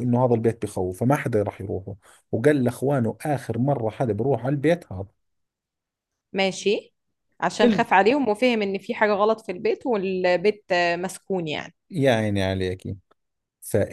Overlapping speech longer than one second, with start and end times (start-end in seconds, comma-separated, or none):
none